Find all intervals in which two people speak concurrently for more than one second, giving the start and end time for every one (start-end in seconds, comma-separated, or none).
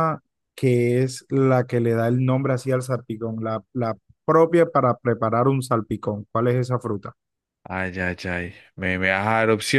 none